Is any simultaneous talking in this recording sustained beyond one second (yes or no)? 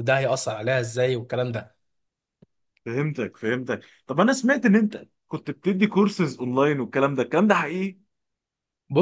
no